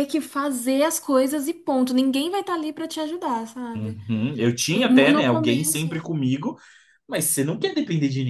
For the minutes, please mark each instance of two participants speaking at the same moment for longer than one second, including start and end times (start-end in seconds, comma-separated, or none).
4.7-6.1